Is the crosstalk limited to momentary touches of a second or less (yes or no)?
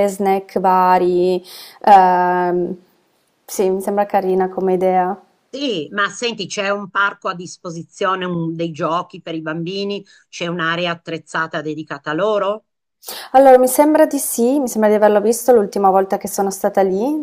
yes